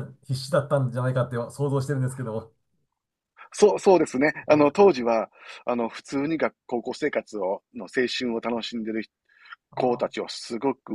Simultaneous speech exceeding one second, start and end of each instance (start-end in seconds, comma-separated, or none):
none